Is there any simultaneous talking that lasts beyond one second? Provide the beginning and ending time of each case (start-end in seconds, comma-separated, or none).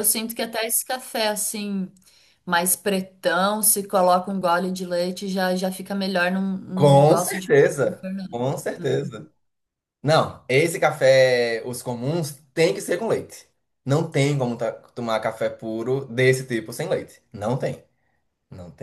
6.7-8.3